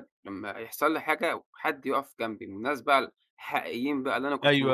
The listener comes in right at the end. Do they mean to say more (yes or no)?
yes